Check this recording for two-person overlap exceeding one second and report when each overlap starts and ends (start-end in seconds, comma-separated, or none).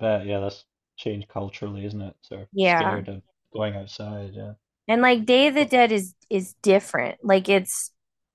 none